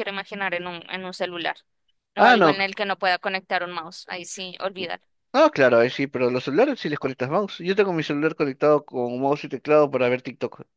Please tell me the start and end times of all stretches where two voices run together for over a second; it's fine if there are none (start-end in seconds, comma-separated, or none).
none